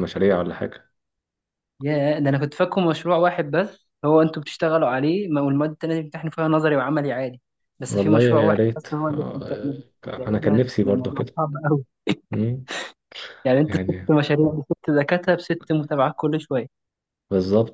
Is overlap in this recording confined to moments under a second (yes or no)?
no